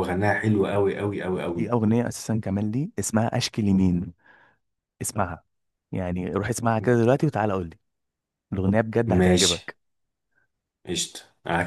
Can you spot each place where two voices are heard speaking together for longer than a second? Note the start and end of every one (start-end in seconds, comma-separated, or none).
none